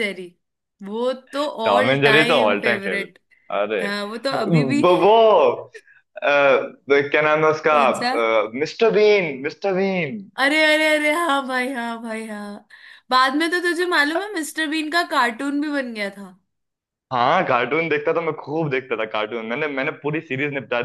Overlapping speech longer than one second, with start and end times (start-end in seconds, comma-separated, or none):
1.6-3.1